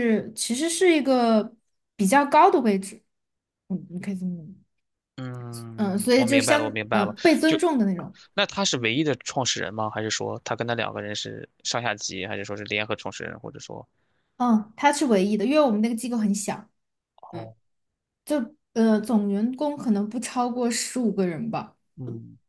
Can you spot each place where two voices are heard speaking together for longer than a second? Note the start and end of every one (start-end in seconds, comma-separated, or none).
5.8-7.6